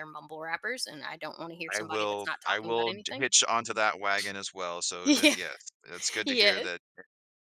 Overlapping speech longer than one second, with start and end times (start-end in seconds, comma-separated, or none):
1.7-3.3